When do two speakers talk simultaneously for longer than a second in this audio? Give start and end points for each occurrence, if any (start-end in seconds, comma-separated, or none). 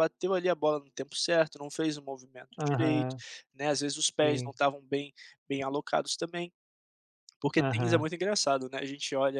none